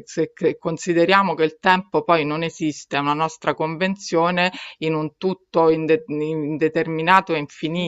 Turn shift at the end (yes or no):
yes